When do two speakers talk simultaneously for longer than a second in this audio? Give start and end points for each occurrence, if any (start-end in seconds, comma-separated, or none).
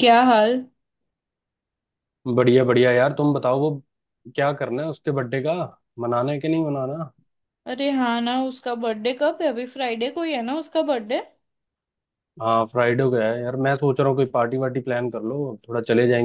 none